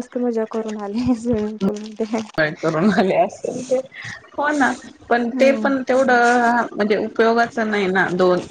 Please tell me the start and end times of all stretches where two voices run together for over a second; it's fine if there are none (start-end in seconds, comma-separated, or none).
none